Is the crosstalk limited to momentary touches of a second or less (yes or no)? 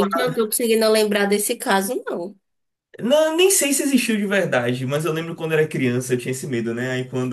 yes